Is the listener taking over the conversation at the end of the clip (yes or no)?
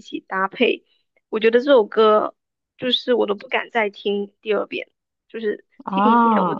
no